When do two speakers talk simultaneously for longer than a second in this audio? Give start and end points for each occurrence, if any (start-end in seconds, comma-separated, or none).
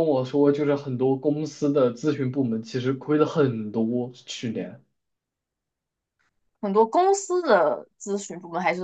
none